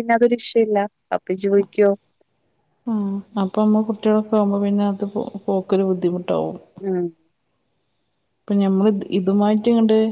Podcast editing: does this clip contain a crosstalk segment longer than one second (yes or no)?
no